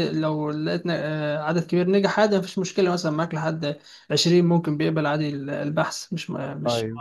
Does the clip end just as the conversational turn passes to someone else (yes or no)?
no